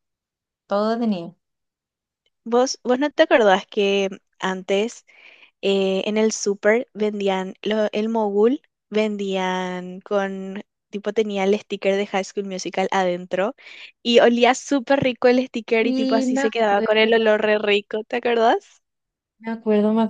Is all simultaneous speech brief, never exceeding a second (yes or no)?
no